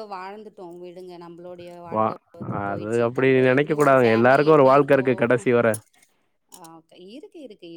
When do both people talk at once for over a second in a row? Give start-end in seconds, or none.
2.7-5.1